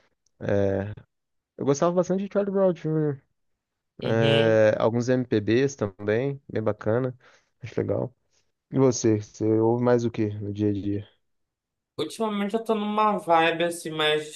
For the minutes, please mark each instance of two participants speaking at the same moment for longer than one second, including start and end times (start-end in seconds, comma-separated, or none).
none